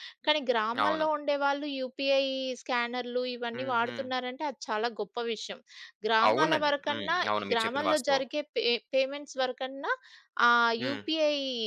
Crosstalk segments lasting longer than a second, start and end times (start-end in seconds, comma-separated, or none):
6.3-8.2